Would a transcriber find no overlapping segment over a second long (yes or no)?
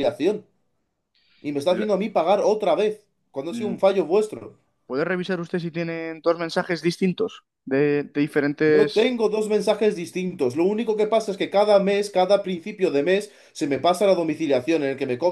yes